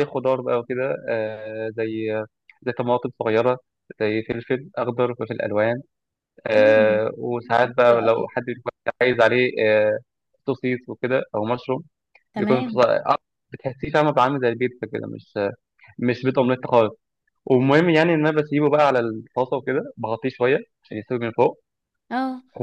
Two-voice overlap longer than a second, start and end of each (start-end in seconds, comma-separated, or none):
none